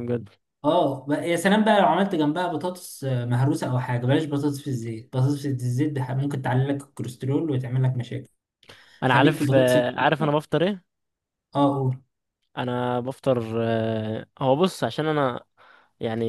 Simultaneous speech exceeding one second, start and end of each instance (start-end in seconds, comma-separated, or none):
9.1-10.3